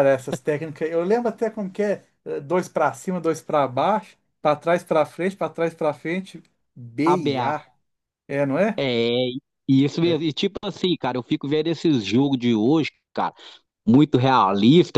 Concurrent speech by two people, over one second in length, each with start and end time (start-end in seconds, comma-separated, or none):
none